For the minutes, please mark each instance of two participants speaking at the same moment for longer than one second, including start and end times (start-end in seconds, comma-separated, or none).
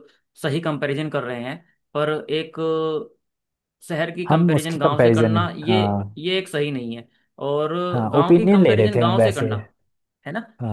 4.3-5.8, 8.1-9.5